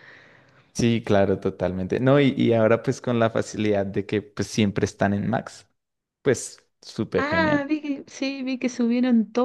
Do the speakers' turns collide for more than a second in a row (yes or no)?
no